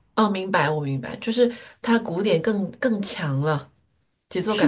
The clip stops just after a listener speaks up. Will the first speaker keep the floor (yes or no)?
no